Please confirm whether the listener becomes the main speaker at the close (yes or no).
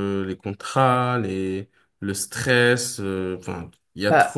yes